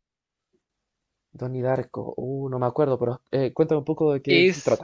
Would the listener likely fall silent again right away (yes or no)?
no